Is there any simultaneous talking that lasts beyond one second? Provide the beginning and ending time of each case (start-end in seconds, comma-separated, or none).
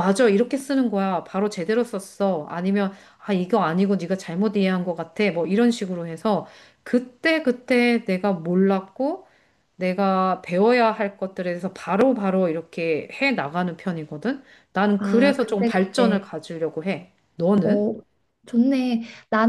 15.0-16.3